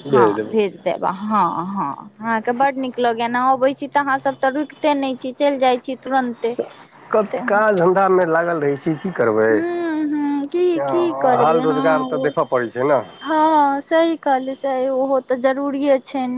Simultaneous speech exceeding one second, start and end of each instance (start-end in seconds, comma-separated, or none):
10.7-12.3